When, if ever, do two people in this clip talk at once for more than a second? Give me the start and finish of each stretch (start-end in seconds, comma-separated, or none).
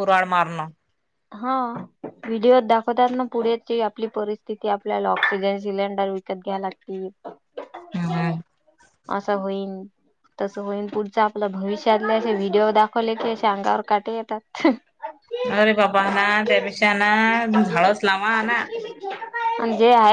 none